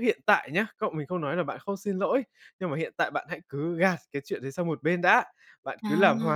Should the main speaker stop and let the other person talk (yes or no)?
no